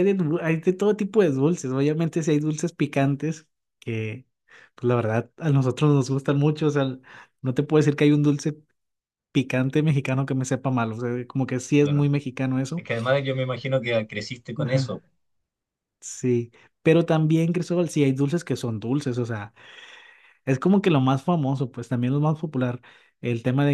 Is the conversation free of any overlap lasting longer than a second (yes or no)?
yes